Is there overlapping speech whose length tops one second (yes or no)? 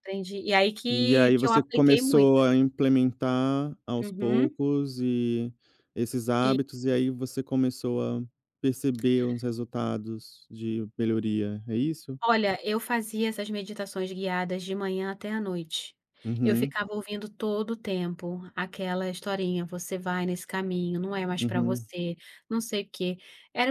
yes